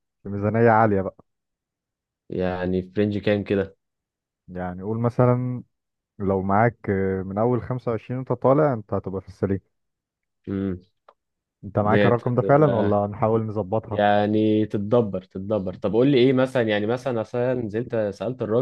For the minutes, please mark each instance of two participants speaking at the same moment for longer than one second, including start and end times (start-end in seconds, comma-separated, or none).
11.8-13.0